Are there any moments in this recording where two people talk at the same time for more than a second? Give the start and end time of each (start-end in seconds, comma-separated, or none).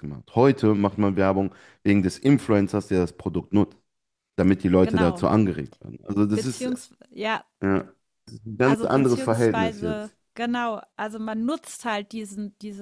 8.6-10.1